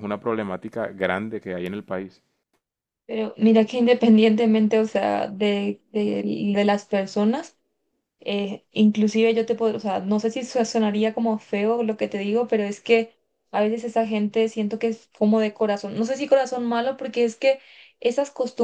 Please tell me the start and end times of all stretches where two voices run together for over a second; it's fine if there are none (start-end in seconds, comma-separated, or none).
none